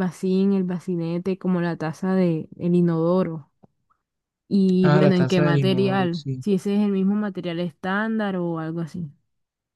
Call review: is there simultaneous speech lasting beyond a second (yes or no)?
yes